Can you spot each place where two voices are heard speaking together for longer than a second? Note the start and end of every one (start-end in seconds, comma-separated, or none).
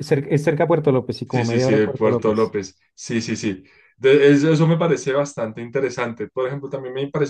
1.2-2.5